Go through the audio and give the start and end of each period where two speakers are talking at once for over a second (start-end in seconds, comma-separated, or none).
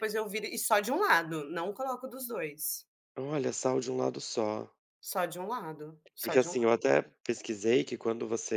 none